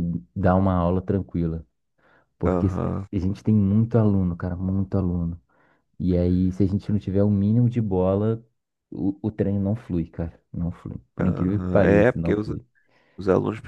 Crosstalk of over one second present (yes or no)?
yes